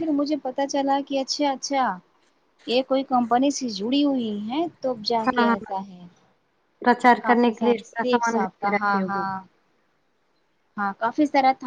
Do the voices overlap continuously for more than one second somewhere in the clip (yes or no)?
yes